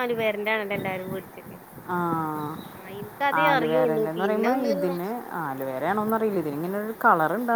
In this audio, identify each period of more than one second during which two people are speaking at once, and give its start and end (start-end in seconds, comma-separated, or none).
3.5-5.1